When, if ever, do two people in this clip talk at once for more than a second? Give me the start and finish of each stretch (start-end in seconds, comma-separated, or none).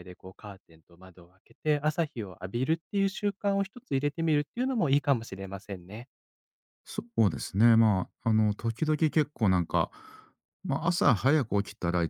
none